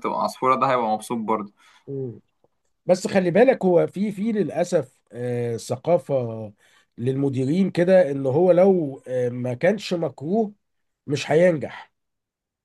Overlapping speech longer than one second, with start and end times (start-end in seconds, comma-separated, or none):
none